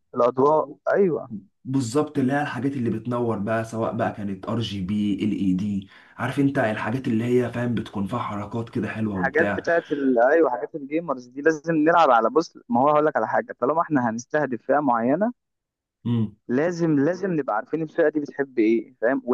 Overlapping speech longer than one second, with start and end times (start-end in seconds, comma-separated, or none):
none